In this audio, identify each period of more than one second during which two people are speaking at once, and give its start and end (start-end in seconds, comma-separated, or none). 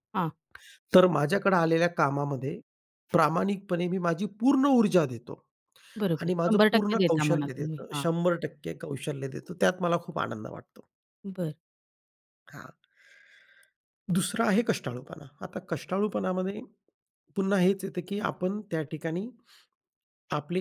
6.2-8.0